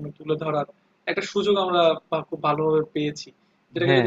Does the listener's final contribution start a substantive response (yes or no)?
no